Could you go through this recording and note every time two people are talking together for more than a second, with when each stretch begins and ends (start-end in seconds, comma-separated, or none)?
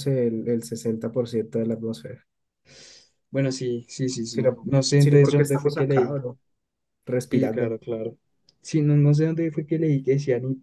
4.3-6.2